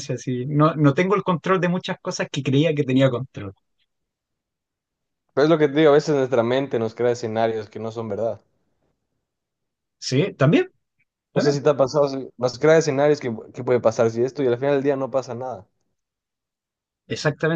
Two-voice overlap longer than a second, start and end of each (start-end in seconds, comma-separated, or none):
none